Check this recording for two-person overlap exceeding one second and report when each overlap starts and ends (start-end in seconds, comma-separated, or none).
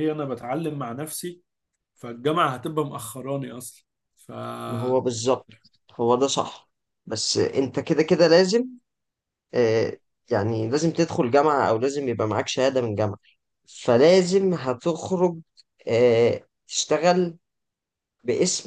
none